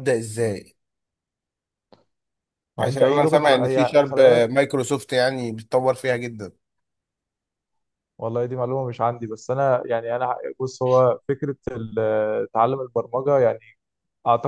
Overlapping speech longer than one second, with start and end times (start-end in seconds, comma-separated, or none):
2.8-4.5